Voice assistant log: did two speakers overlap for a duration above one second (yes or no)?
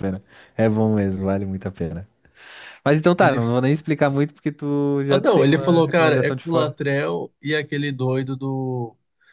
yes